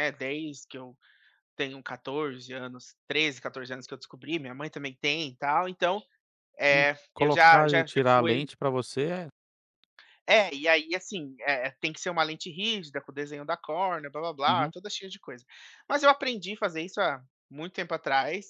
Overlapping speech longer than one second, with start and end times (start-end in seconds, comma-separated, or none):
6.7-8.4